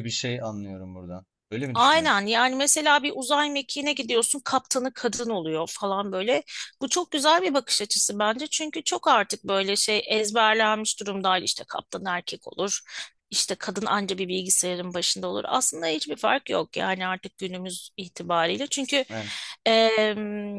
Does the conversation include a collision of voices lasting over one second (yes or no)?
no